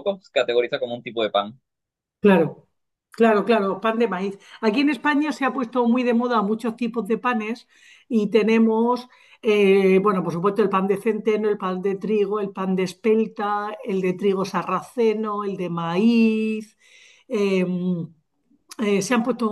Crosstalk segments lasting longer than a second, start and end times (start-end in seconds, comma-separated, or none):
none